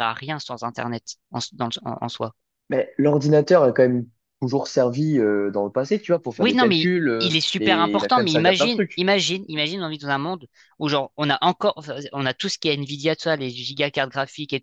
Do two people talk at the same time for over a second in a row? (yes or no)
yes